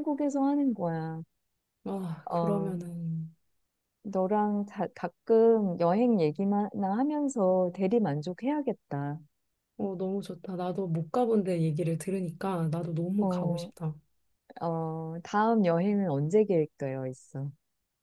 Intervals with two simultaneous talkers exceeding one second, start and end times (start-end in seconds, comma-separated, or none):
none